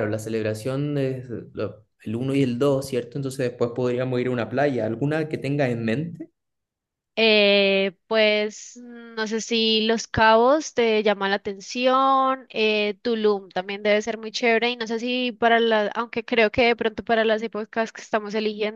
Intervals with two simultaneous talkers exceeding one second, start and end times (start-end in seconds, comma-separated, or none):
none